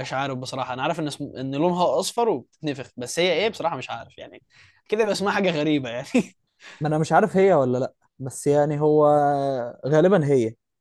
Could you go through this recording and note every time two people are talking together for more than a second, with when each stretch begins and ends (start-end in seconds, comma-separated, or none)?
none